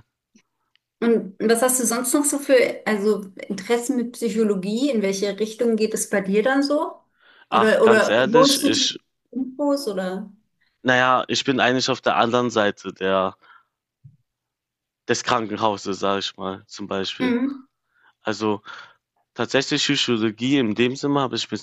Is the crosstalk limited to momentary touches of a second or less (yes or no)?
no